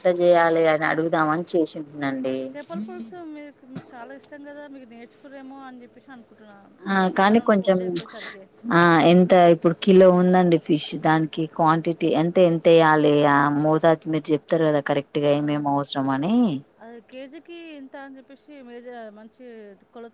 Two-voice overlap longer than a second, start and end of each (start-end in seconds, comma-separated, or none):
none